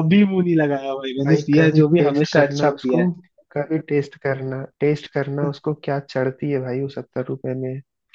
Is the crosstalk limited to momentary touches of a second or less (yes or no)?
no